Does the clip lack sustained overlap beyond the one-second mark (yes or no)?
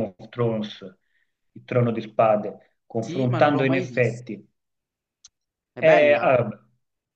no